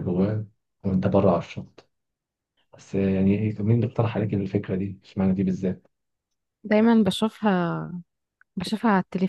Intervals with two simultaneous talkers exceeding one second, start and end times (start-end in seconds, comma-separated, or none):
none